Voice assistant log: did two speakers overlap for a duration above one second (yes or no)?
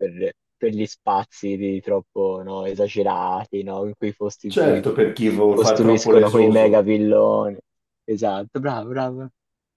yes